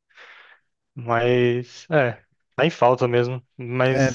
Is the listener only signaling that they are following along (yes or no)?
no